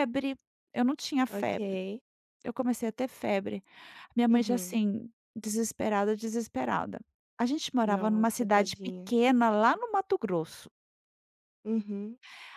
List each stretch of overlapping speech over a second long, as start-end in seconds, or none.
7.8-9.1